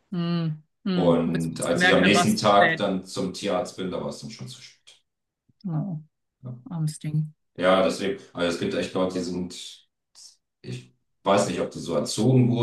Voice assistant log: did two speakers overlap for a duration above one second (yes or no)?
yes